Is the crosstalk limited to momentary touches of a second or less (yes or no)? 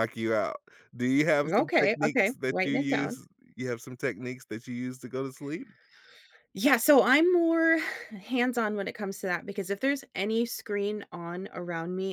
no